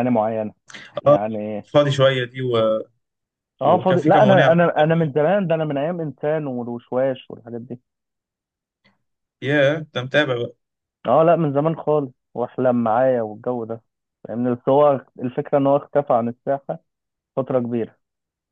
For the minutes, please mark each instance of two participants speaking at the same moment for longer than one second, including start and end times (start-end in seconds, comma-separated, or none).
3.6-5.2